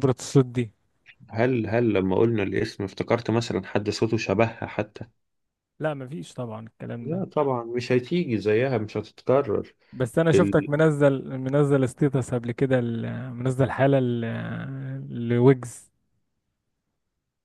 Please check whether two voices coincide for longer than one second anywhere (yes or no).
no